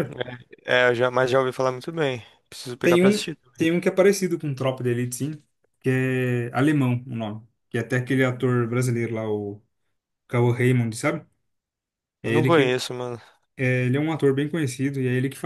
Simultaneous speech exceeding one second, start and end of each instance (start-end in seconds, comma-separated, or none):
none